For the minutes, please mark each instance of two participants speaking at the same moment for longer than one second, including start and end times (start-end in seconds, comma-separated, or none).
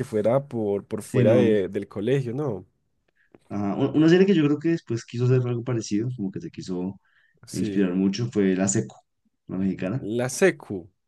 none